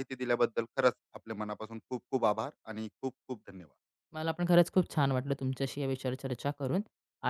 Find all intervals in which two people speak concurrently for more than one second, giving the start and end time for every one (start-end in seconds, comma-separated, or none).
none